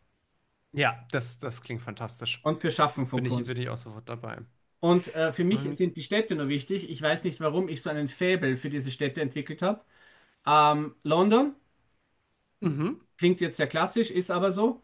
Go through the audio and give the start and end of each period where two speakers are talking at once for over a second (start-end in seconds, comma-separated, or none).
none